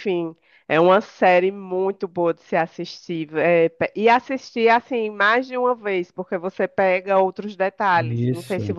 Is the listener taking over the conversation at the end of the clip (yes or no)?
no